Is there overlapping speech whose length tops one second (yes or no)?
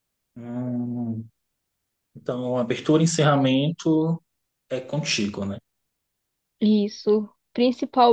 no